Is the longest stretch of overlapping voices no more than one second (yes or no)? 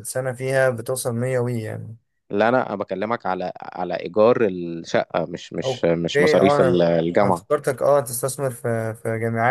no